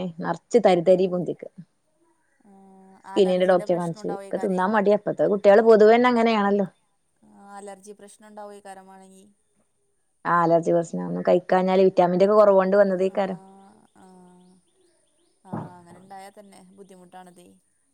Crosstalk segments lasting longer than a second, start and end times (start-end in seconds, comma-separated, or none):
3.2-4.6